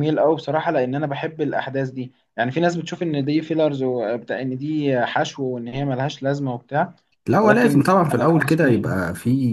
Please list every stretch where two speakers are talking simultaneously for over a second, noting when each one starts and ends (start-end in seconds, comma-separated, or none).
7.4-8.9